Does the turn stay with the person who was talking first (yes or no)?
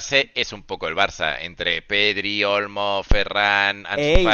no